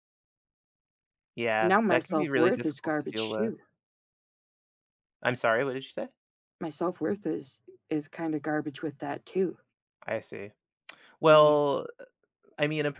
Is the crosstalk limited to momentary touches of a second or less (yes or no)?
no